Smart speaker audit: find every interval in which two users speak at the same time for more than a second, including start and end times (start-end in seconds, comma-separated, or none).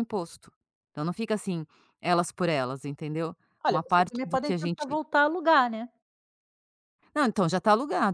3.7-5.0